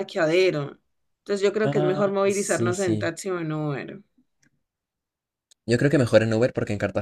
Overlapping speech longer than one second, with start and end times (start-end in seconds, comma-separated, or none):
1.6-3.1